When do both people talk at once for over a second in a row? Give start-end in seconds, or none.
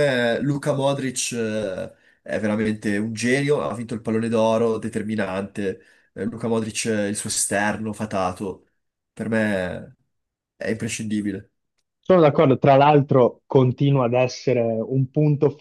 none